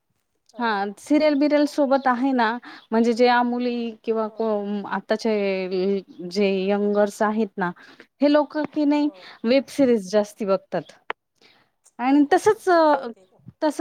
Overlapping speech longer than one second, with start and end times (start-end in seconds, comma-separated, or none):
none